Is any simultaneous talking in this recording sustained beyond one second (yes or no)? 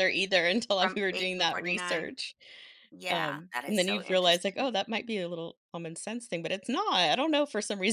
yes